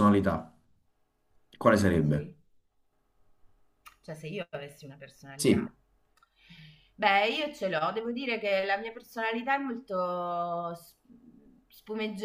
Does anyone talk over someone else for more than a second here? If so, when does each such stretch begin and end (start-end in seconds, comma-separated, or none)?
none